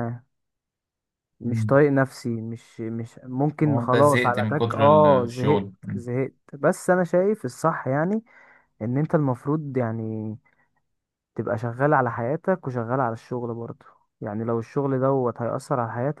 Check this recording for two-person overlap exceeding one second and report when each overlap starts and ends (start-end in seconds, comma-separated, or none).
3.6-5.7